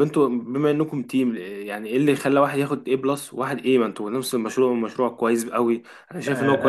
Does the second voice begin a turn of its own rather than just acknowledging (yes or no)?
yes